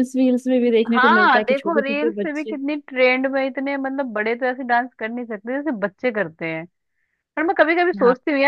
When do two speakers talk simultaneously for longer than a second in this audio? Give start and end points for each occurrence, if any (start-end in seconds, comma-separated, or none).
1.0-2.5